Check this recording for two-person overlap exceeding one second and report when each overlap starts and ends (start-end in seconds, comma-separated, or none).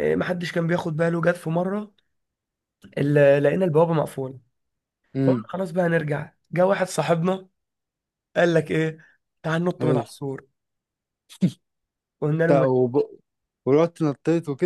none